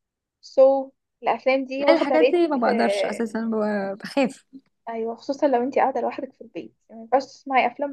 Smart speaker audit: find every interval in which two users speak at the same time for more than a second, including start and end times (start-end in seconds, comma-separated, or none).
1.8-3.2